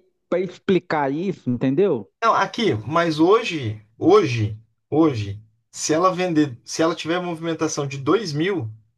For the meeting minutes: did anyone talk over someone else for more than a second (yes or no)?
no